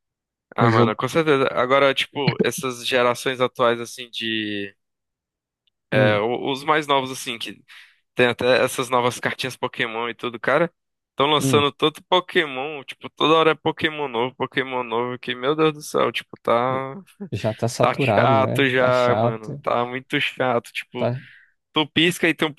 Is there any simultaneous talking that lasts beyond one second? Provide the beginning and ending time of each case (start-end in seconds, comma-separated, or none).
17.8-19.6